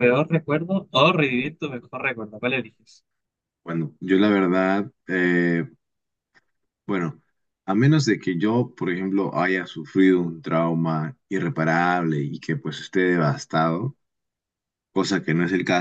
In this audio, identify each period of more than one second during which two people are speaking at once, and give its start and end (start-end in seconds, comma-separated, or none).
none